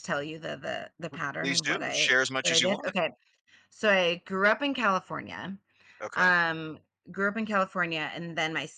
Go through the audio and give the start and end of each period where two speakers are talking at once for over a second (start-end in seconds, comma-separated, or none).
1.4-2.9